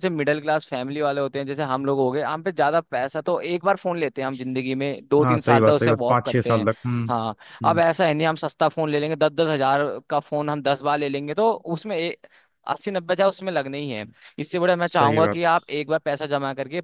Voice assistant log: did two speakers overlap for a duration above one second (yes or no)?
yes